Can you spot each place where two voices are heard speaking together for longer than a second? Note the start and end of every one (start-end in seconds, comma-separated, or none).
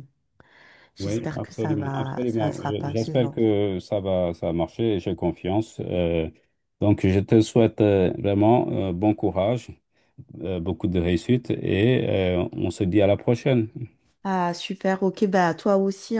1.0-3.4